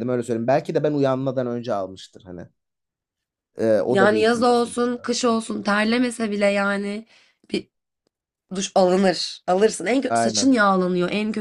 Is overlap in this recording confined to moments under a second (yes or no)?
no